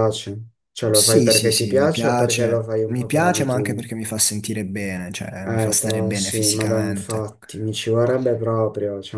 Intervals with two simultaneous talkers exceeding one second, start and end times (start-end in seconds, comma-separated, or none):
0.9-3.9, 5.4-7.3